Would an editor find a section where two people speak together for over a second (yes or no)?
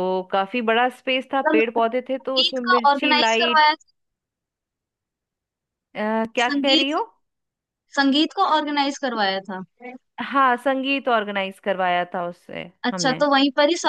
yes